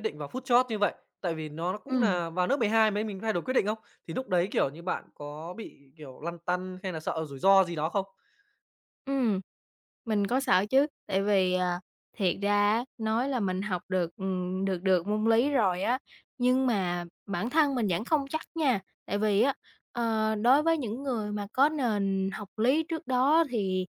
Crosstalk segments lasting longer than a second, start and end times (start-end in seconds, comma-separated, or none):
none